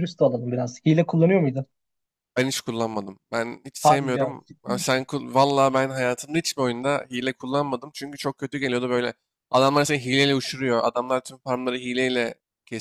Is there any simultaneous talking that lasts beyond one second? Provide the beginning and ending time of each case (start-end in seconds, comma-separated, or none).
3.8-5.0